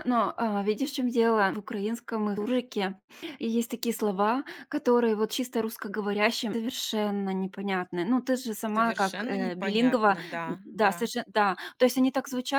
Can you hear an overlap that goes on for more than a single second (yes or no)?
yes